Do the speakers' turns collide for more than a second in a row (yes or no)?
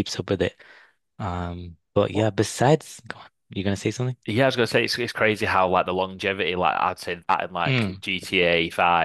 no